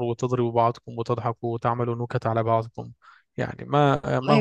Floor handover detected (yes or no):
yes